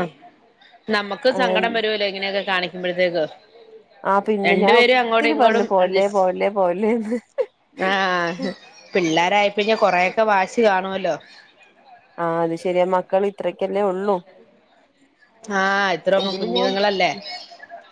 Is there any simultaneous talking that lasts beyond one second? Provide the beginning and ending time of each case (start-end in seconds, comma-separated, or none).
none